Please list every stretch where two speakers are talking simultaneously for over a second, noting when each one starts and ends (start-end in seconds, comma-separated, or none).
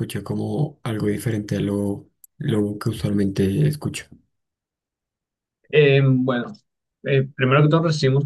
none